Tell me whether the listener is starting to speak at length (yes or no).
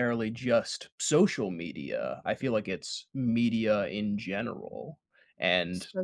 no